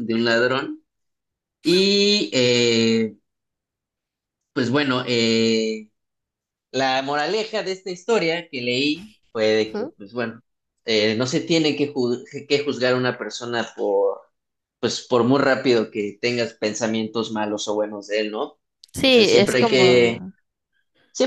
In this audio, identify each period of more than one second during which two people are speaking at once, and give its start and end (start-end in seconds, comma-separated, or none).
19.0-20.2